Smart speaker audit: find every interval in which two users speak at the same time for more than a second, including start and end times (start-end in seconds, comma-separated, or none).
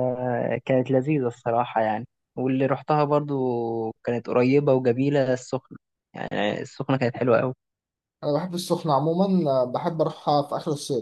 none